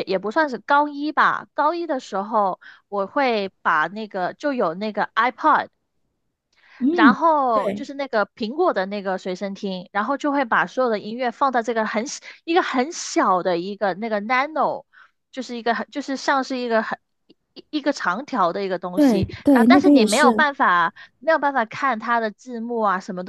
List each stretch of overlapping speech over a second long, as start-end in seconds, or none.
18.9-20.4